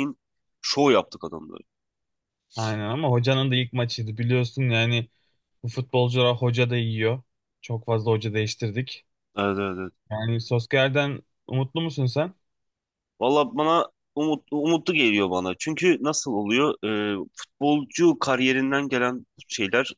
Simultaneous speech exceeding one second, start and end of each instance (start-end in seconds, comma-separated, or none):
none